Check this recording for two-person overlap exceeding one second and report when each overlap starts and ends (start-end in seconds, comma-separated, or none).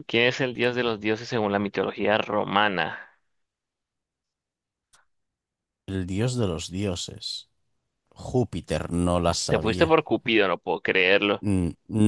none